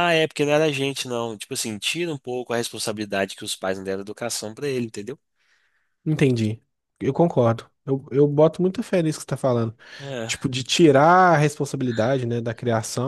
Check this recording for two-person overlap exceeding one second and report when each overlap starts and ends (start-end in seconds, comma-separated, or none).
none